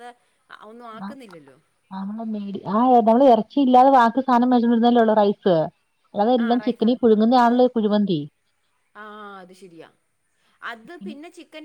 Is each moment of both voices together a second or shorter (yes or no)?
yes